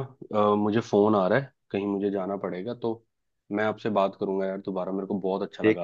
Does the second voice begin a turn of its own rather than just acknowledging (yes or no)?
yes